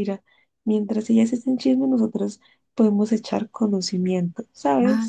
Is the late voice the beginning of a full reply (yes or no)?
yes